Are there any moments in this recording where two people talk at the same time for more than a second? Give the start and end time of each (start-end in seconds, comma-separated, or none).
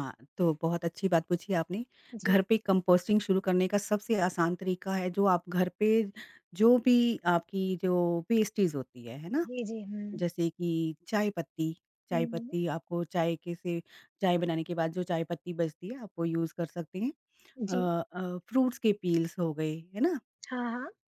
none